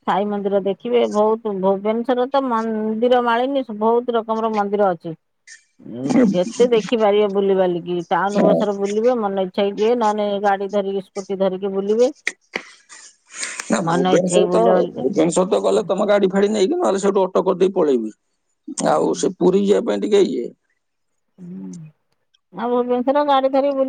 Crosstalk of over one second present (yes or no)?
yes